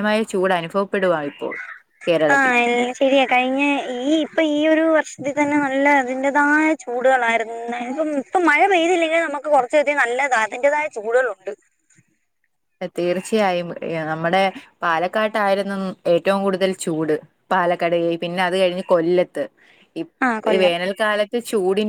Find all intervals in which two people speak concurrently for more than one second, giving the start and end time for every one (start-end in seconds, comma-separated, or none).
none